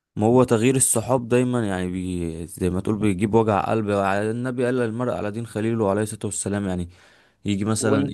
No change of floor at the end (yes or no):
yes